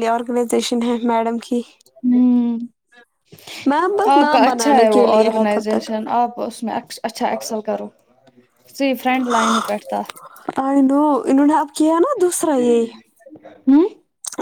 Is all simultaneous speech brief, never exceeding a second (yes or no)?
no